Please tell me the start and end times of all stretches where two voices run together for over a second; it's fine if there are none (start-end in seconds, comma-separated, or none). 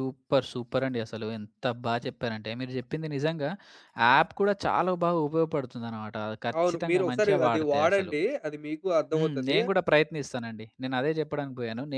6.6-8.1